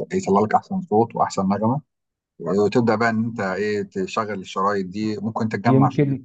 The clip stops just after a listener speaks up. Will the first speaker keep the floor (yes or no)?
no